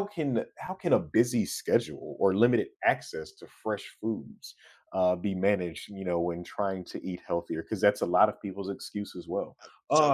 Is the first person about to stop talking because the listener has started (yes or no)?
no